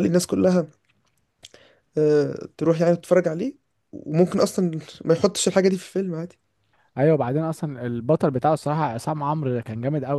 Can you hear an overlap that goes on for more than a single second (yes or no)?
no